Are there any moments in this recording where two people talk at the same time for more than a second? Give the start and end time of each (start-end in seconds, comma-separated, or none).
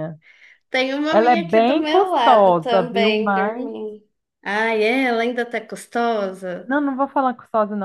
1.1-3.7